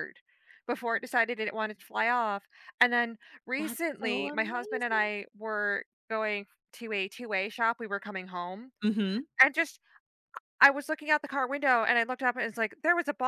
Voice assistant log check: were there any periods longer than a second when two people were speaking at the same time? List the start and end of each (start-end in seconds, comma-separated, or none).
3.6-5.1